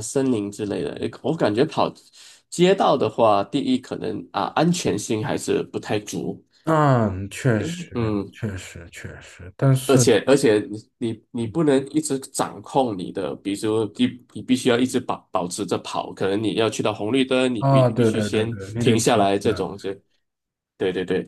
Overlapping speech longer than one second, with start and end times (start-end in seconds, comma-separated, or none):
17.6-19.6